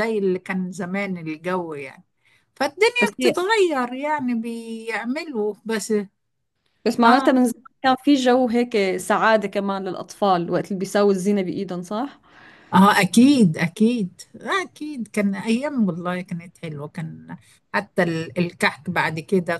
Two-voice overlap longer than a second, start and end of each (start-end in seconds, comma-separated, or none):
none